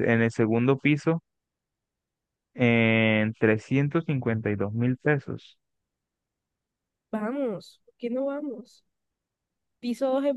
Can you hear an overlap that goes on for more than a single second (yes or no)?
no